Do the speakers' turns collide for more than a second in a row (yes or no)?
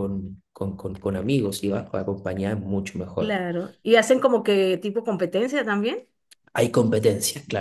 no